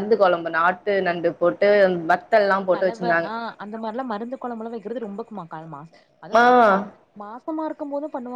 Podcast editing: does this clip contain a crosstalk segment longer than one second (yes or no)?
no